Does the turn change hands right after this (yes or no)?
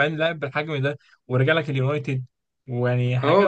yes